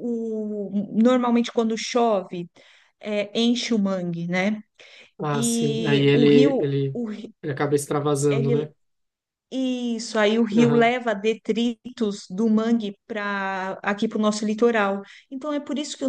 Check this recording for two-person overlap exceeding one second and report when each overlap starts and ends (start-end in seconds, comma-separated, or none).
5.3-7.0